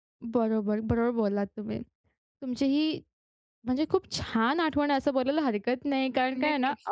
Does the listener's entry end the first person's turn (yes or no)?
no